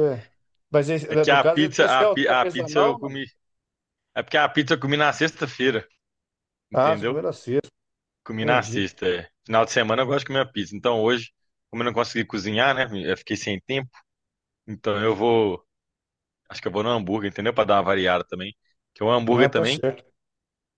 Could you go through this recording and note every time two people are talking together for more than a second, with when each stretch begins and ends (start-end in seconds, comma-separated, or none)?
1.1-3.2